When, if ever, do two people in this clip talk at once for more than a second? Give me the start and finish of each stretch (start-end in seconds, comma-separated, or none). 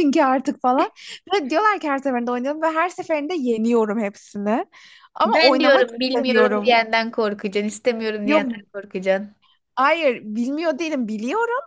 5.2-6.8